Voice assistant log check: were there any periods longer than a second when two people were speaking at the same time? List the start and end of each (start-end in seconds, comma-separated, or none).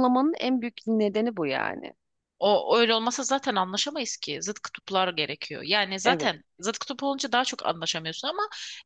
none